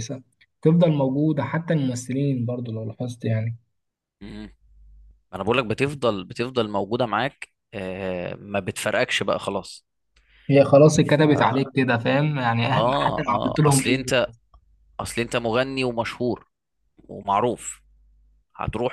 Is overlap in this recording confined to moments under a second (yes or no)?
no